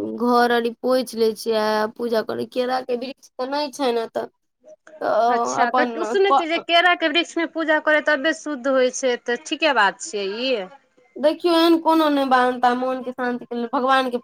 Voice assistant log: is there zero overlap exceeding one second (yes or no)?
yes